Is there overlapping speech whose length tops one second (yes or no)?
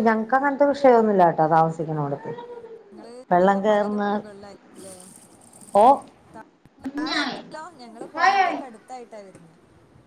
no